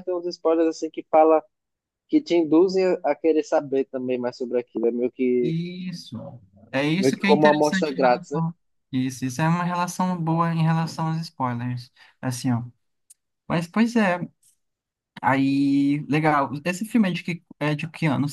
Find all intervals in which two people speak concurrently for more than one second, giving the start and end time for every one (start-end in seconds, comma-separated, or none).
7.0-8.4